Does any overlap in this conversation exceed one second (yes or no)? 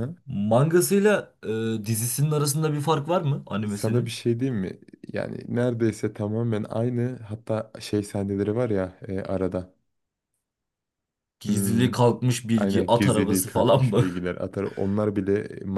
yes